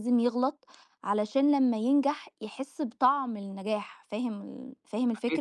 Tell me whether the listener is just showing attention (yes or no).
no